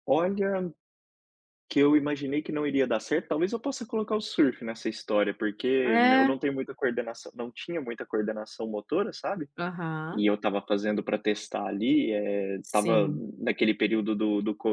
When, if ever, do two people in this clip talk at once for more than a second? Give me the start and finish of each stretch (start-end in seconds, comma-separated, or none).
none